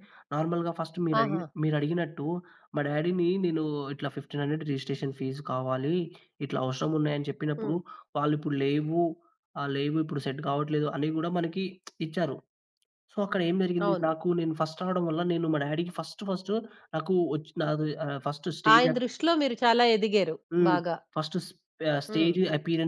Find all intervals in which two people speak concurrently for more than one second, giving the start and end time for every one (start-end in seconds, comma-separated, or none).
none